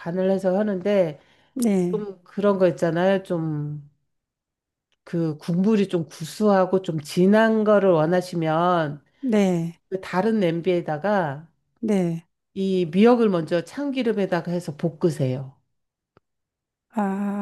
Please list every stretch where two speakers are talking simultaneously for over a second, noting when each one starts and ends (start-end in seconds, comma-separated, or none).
none